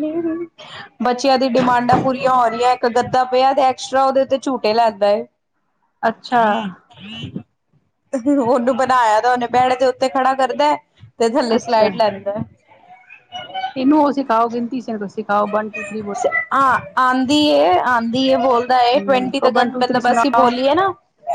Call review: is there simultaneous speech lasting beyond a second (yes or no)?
yes